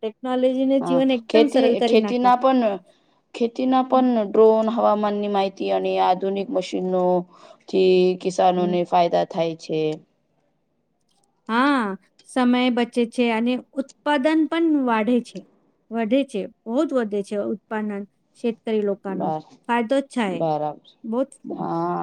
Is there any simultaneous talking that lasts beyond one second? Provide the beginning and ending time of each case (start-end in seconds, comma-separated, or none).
none